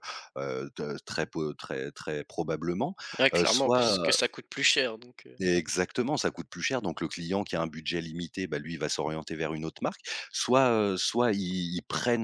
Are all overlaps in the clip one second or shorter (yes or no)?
yes